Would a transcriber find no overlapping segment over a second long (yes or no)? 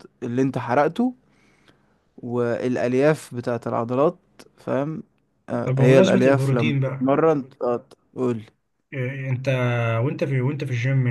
no